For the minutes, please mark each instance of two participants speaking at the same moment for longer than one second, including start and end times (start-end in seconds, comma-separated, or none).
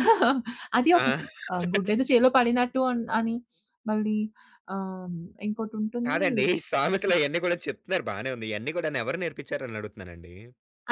none